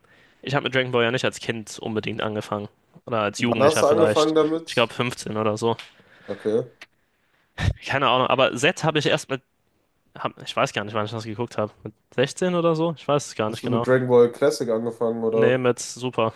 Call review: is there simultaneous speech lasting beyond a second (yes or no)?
yes